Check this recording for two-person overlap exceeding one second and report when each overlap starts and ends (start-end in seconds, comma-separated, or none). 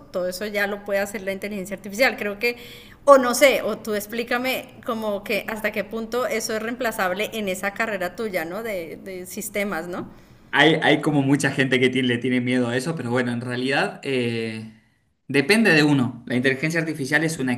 none